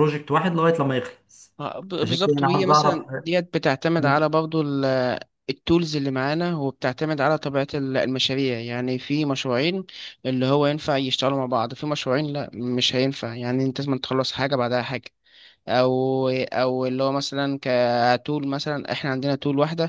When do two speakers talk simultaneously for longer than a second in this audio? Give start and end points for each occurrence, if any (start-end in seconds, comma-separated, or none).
2.0-3.3